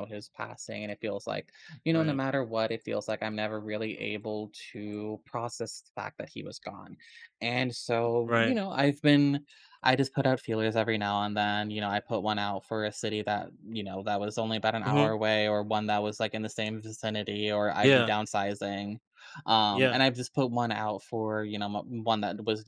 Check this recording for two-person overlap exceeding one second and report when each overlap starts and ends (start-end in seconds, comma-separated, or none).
none